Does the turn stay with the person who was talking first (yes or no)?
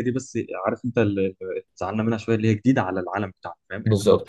yes